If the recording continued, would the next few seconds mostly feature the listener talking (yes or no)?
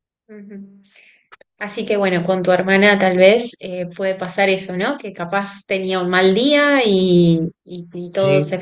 no